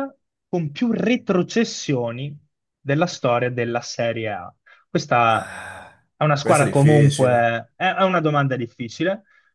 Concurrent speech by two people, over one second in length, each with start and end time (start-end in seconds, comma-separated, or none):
6.2-7.5